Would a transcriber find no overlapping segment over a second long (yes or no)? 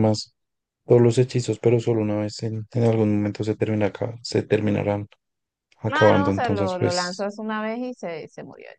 no